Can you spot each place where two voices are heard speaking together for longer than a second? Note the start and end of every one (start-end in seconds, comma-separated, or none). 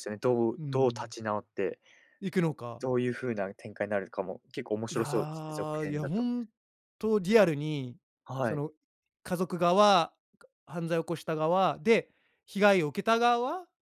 4.9-6.2